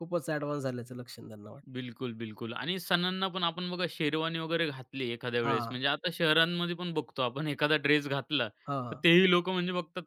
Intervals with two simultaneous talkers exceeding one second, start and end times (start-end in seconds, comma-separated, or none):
none